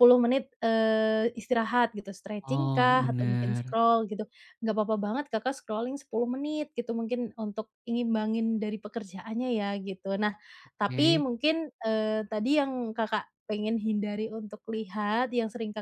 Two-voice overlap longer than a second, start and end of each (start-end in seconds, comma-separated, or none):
2.5-3.8